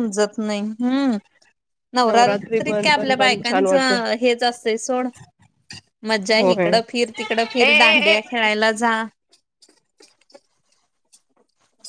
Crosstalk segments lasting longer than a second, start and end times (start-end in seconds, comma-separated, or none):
2.1-4.0